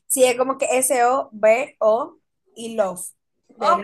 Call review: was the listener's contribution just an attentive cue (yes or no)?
no